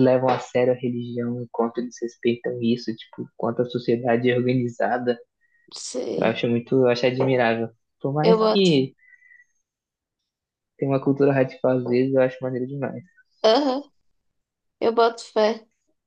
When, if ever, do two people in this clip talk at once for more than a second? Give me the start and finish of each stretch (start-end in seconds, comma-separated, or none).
none